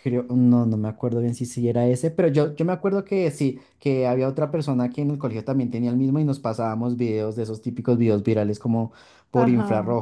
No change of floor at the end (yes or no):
no